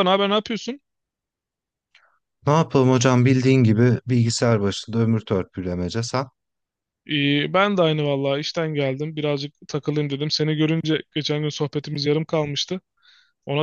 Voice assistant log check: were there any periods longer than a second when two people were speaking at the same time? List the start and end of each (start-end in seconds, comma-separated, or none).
none